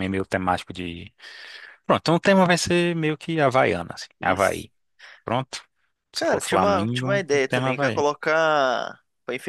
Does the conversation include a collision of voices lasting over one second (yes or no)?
yes